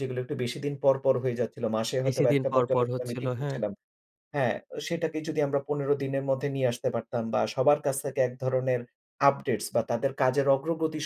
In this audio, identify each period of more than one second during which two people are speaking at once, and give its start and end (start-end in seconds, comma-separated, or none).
2.0-3.6